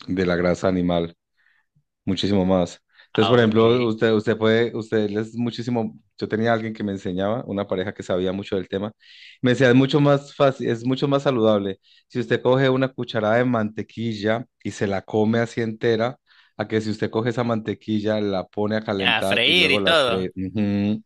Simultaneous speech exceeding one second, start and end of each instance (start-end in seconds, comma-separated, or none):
19.0-20.3